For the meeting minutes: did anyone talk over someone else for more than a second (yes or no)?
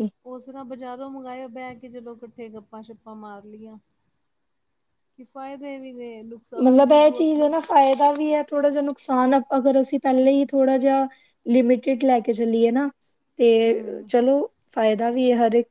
no